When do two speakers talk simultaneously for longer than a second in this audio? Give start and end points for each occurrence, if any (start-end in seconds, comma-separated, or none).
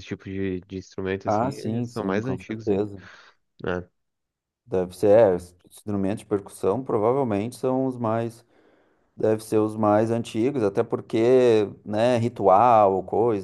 1.3-2.9